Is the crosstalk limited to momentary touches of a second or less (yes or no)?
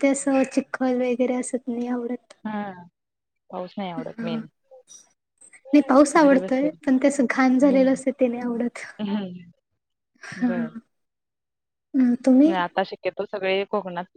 yes